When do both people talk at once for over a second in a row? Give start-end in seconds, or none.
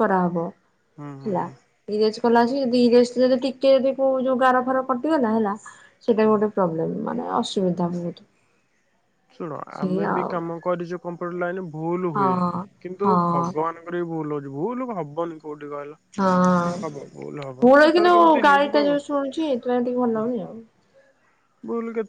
17.6-20.3